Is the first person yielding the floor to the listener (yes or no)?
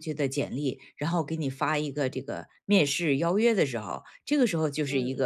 no